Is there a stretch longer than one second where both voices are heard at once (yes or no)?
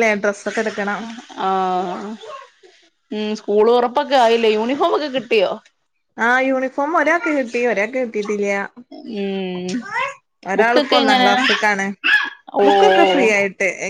no